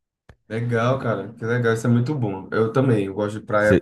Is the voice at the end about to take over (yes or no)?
yes